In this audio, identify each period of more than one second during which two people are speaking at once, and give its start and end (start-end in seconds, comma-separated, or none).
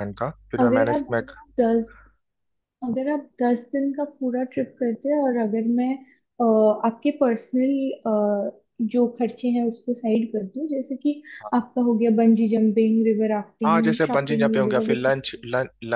13.7-15.2